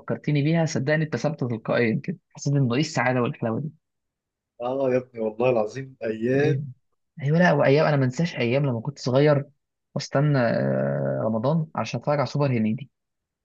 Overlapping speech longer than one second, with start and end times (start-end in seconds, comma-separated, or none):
none